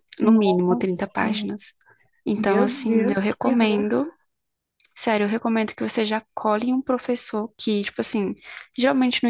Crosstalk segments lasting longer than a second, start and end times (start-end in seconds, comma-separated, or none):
2.4-3.9